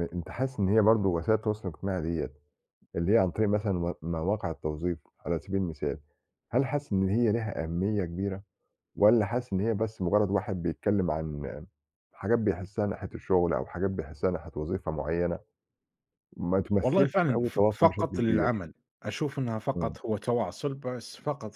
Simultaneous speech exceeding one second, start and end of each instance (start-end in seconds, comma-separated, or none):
16.8-18.5